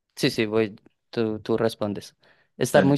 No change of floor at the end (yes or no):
yes